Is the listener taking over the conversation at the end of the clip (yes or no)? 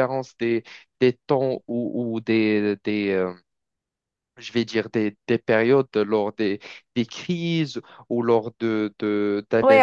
yes